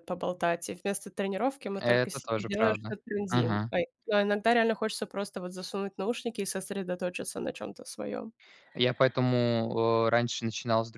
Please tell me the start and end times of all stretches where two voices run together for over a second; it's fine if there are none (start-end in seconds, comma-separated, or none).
1.8-3.7